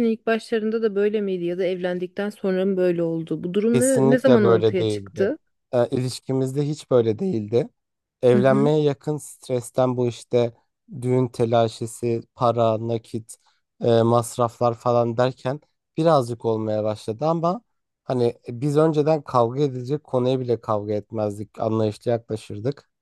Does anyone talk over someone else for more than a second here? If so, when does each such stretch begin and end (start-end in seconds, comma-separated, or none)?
3.7-5.3